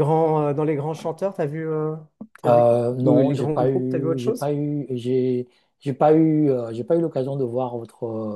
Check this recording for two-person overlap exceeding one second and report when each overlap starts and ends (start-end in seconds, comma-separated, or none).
2.5-4.5